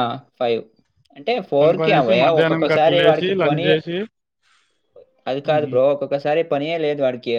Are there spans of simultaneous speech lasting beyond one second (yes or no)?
yes